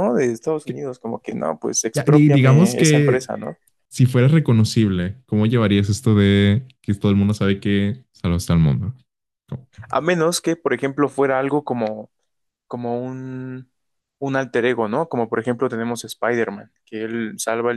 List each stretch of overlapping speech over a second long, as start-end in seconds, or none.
1.9-3.3